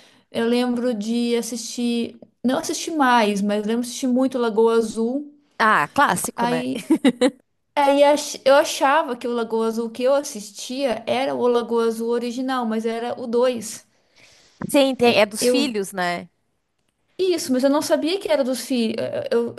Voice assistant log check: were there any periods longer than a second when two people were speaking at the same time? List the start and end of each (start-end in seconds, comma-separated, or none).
none